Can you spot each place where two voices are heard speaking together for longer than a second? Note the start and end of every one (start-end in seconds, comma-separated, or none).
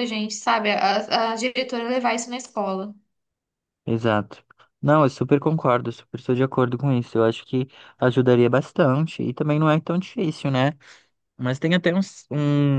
none